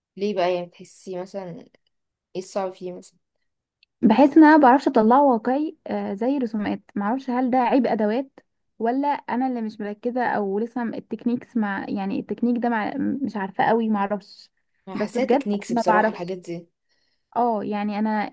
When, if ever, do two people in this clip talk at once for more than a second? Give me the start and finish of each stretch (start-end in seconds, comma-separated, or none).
14.9-16.3